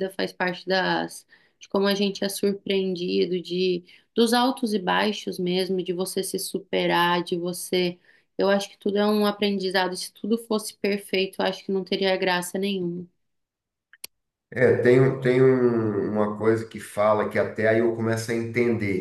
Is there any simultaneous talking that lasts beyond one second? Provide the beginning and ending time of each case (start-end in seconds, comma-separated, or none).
none